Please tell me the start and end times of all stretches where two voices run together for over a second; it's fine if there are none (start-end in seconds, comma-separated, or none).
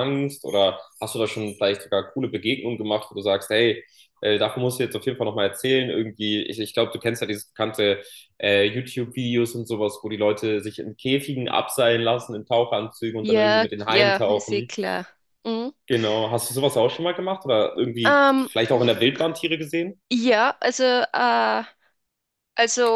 13.2-14.7